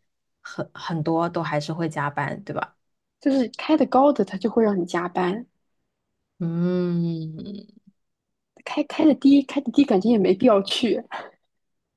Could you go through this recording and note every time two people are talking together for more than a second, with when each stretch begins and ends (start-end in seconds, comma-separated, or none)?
none